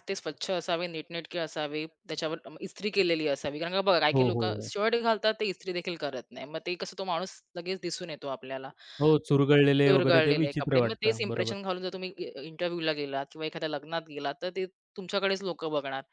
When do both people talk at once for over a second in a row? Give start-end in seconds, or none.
9.8-11.6